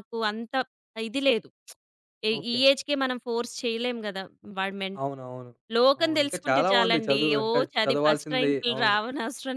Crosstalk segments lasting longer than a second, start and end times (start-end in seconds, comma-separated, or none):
6.0-9.0